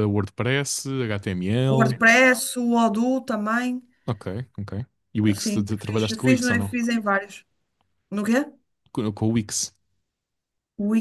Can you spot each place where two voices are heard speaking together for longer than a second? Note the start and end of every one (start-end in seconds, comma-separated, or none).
5.3-6.7